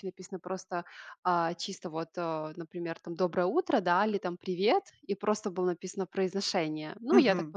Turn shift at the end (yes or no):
yes